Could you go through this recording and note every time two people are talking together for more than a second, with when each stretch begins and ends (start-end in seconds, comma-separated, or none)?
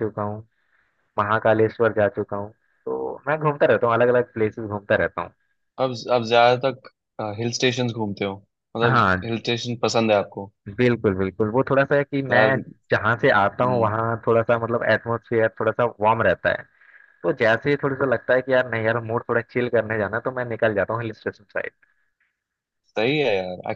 none